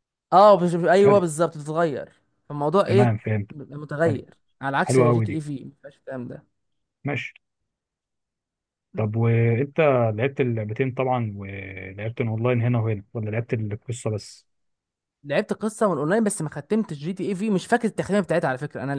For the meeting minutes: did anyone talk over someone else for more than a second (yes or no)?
no